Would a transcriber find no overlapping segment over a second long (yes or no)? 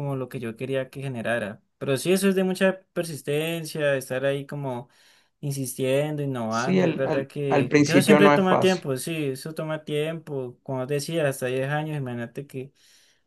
no